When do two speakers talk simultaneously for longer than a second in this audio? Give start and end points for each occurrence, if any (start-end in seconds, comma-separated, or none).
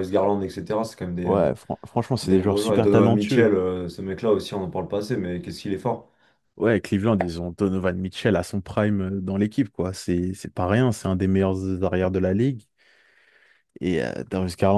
2.2-3.5